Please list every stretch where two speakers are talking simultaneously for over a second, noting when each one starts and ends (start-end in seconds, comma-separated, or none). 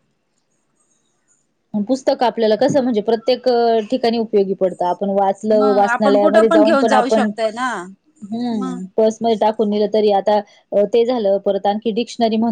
5.6-7.3